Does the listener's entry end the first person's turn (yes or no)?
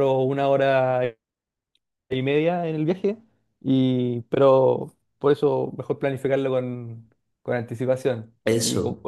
no